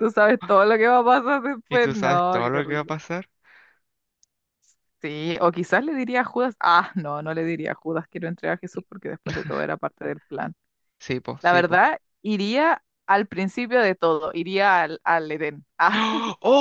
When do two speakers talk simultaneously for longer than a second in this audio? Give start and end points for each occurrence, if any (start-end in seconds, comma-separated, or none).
1.7-2.9